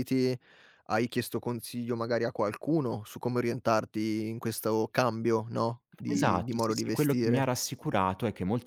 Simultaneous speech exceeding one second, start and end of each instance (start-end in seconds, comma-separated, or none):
6.1-7.5